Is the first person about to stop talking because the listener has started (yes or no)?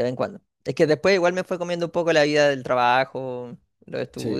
no